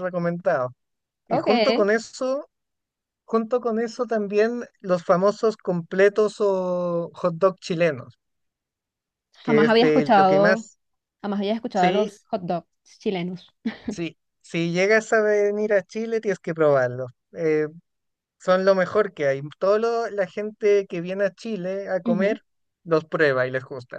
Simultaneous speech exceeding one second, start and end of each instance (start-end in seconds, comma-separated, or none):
9.4-10.7